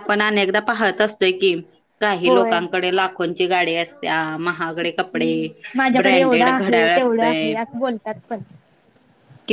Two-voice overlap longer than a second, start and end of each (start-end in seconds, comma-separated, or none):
6.0-7.5